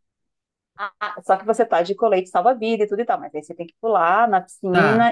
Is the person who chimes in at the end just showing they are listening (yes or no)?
yes